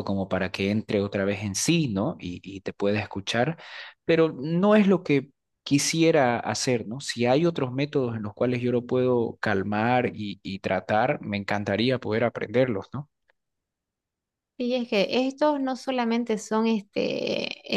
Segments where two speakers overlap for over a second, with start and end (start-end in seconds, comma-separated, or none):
none